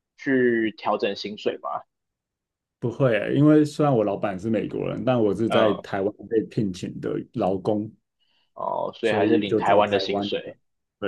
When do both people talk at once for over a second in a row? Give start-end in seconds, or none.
9.0-10.5